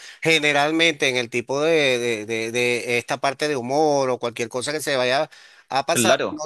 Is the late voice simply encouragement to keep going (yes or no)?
yes